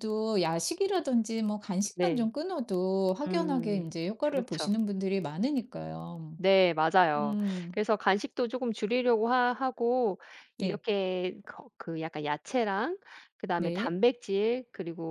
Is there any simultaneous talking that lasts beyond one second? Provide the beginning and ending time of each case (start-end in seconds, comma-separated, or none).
3.3-4.7